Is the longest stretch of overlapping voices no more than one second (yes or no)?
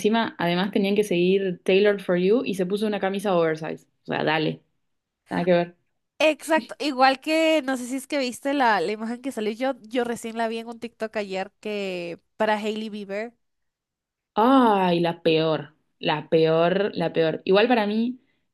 yes